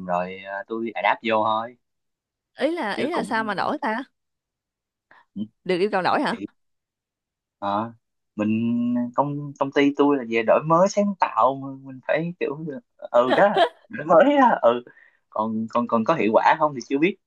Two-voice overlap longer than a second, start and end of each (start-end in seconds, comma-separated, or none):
none